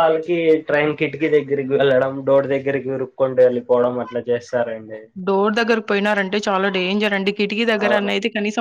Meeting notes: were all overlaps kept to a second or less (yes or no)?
yes